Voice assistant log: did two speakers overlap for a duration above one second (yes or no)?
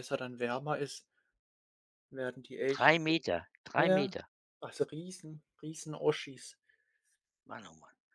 no